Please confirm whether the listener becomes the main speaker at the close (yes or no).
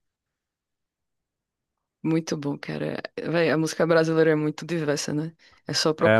yes